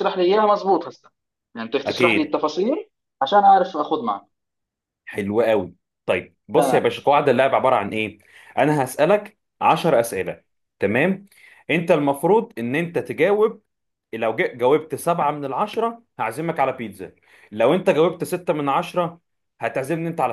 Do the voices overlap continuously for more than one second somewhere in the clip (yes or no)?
no